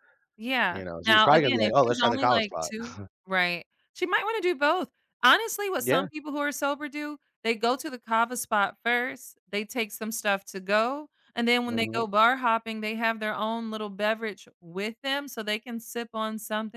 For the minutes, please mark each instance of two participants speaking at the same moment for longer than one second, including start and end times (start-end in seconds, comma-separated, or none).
0.7-2.7